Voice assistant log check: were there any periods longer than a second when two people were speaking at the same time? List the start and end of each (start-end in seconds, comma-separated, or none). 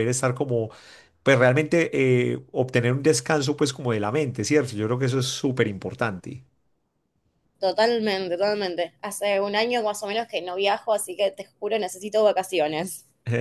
none